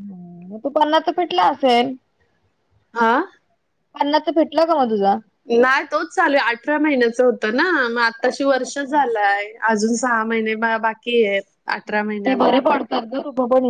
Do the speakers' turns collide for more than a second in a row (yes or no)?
no